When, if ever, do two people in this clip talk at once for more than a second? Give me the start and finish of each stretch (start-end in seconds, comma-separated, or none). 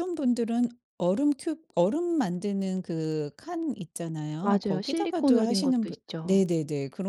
4.4-6.4